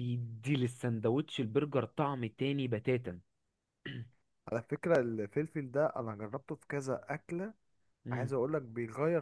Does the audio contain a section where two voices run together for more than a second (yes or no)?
no